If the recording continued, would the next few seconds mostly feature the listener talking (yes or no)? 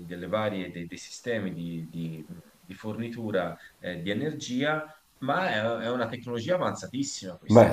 no